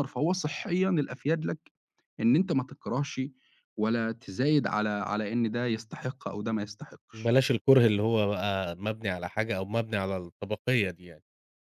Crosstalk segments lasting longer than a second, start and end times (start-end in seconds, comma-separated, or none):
none